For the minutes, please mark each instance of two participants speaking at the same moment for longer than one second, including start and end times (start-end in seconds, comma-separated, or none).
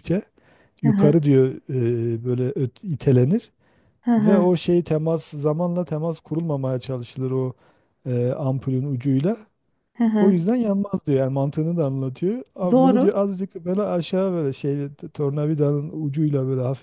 none